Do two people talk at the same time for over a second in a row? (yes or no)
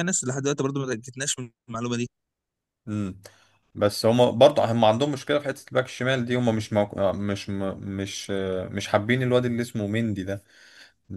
no